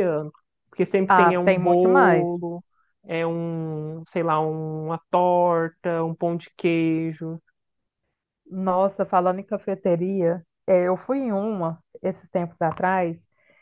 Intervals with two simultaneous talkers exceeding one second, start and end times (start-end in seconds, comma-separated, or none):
1.1-2.3